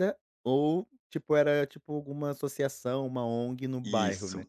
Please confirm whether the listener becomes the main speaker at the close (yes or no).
yes